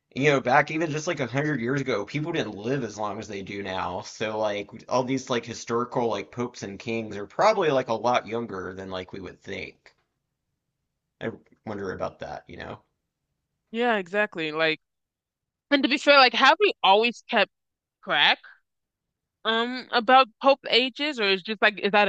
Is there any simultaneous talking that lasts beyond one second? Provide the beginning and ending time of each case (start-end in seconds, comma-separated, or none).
none